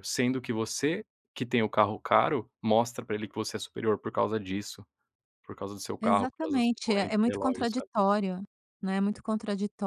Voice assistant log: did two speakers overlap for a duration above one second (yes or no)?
yes